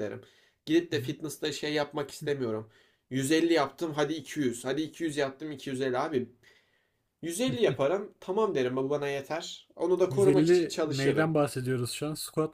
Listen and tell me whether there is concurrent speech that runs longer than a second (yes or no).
yes